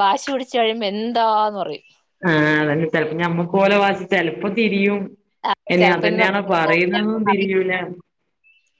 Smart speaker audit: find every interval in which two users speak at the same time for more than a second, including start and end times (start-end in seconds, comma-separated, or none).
5.8-7.5